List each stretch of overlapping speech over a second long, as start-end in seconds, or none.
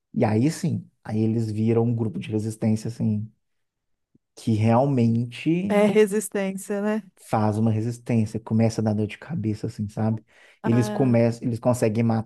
none